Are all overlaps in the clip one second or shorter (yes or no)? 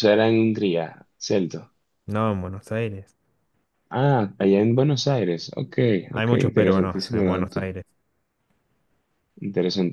no